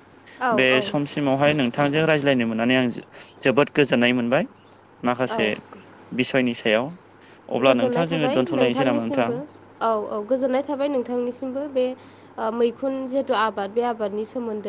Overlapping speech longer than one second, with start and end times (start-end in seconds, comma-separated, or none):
7.7-9.3